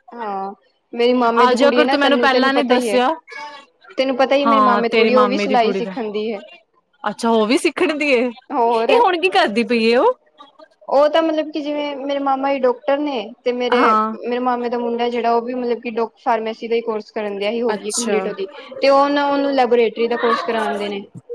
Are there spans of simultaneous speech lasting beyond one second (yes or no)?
yes